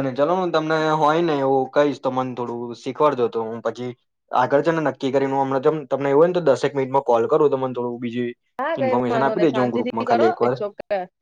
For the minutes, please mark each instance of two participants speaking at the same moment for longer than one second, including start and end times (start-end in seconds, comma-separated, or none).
8.8-10.6